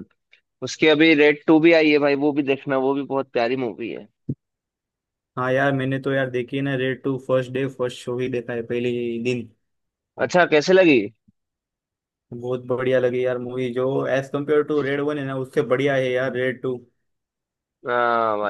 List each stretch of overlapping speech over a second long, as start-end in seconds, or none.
none